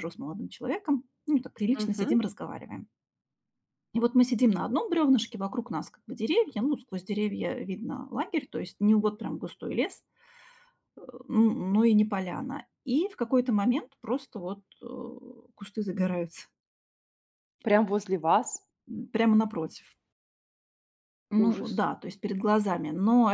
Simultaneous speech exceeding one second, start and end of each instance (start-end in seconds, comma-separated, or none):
none